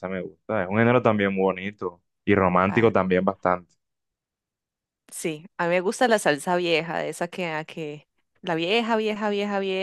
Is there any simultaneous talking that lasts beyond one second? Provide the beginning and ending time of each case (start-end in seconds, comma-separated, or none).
none